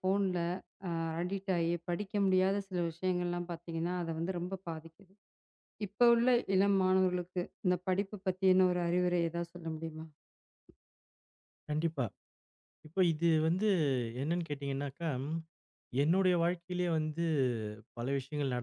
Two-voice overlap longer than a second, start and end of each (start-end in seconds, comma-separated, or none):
none